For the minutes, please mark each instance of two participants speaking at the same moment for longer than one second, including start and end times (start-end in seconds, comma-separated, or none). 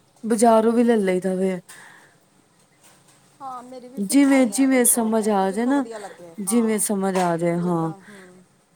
4.1-5.8